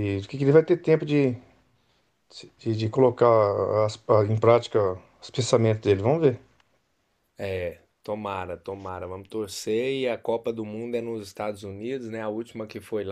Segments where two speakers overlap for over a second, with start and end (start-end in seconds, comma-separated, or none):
none